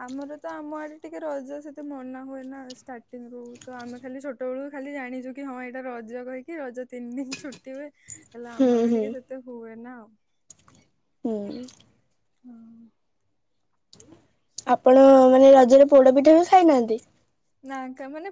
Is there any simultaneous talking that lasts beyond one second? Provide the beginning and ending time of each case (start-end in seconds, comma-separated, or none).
none